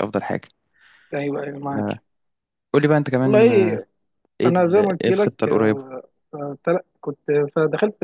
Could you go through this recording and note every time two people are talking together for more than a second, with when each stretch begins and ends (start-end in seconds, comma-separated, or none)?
4.5-5.9